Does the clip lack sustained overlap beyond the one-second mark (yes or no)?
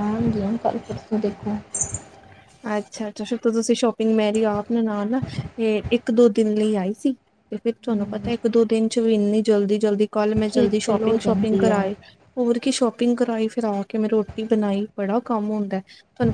no